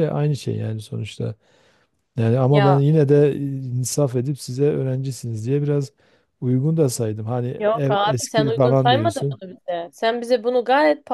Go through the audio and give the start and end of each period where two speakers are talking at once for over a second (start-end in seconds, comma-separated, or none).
7.6-9.4